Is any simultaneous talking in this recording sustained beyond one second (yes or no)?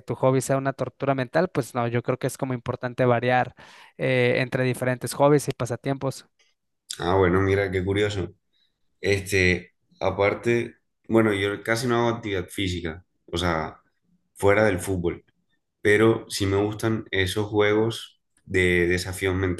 no